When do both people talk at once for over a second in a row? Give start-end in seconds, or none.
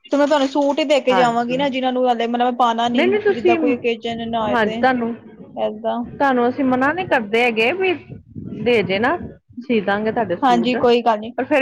none